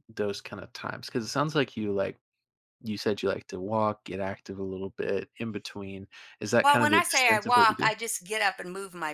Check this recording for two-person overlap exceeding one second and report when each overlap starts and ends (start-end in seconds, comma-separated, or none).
6.6-7.9